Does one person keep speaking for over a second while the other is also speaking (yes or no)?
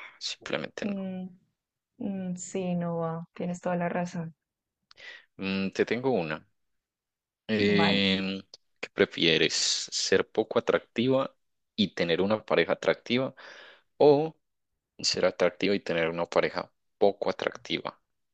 no